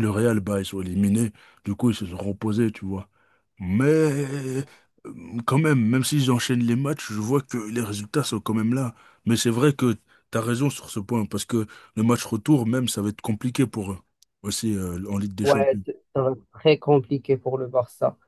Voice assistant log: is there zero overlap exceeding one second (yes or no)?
yes